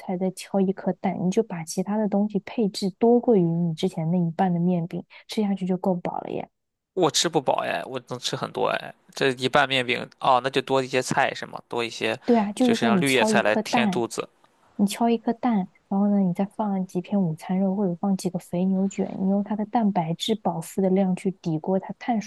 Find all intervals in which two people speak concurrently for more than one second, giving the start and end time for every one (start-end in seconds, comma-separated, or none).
12.6-14.0